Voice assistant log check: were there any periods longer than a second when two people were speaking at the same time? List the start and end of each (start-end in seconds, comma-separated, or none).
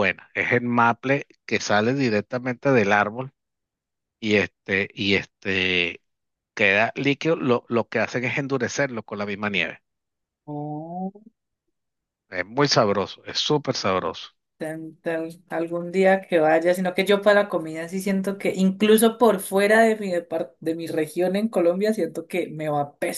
none